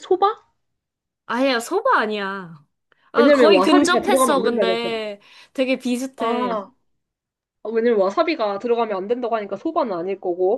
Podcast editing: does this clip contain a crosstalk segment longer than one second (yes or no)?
yes